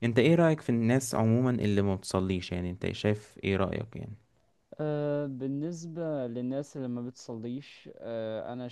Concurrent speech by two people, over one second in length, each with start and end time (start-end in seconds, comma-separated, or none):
none